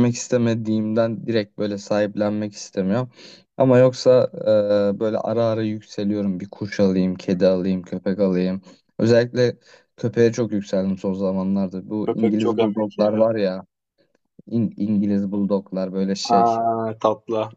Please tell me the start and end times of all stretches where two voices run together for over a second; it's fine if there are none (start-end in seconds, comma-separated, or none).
12.1-13.3